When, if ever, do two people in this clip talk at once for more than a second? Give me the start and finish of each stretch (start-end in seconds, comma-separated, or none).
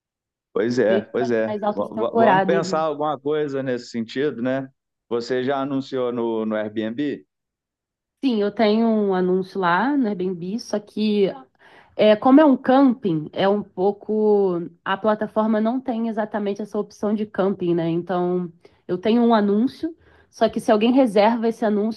0.9-2.8